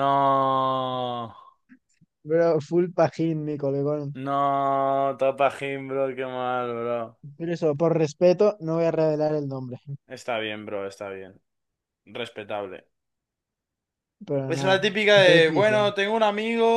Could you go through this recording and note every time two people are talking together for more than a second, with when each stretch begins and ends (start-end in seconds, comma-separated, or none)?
14.5-15.9